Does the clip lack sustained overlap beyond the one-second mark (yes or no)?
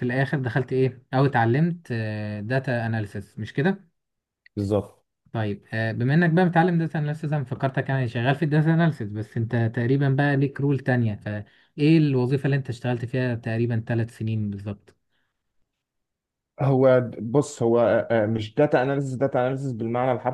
yes